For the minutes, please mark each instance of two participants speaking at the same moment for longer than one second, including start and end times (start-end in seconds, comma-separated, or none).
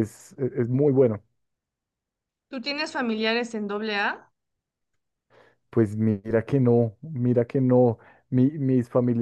none